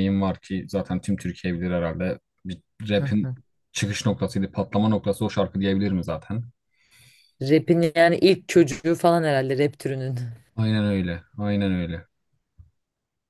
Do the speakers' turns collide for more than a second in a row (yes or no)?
no